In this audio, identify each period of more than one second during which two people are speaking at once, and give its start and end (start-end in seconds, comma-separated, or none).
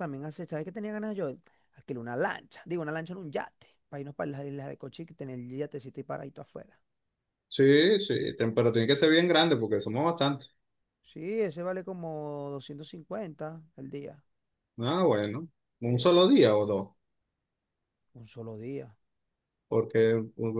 none